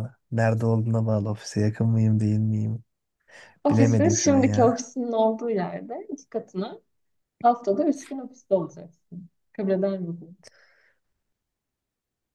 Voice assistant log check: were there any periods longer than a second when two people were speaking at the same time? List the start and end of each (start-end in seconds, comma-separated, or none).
3.7-4.9